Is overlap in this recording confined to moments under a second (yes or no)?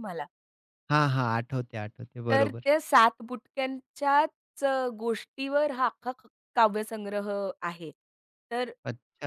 yes